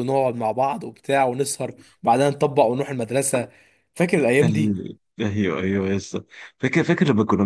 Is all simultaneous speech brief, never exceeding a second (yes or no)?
yes